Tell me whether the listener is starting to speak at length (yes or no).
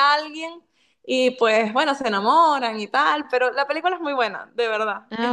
yes